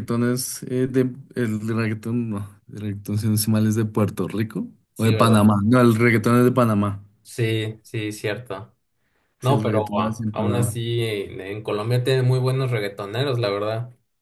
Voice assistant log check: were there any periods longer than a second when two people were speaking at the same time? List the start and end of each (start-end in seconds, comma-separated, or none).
9.4-10.8